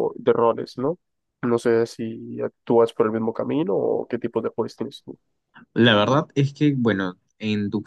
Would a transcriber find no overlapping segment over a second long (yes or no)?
yes